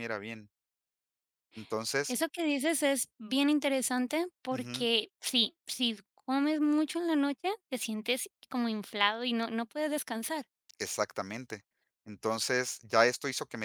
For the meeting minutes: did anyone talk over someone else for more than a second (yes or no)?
no